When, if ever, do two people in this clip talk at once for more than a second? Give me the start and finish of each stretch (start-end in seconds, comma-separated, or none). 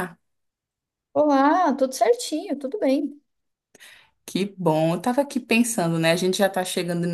none